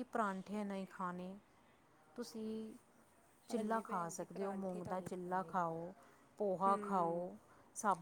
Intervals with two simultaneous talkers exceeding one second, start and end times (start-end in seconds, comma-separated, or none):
3.5-5.5